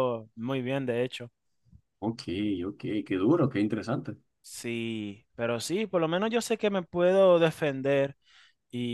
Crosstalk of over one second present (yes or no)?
no